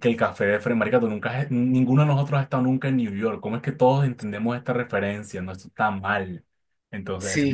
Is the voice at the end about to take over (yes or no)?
yes